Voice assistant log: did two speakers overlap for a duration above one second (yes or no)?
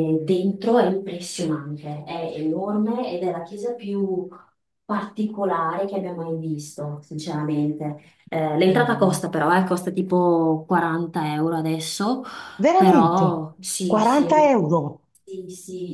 no